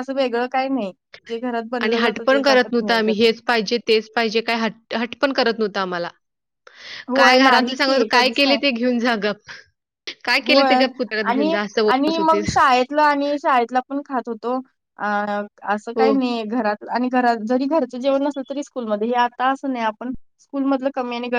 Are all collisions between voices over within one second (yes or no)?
no